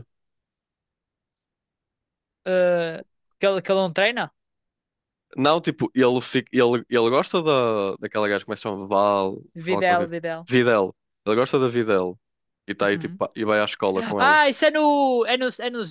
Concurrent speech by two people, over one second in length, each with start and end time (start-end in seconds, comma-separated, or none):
none